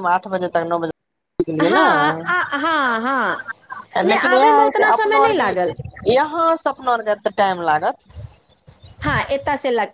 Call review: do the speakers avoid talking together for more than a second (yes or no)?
no